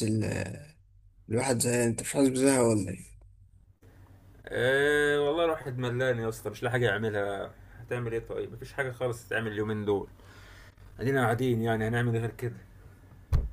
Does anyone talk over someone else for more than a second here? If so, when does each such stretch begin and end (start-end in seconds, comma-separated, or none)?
none